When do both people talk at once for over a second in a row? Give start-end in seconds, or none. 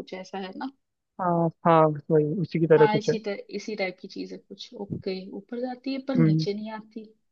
none